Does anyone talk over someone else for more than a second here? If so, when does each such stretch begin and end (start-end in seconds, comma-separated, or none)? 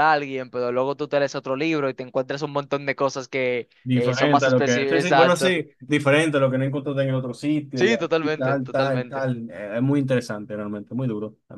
3.8-5.5, 7.7-9.3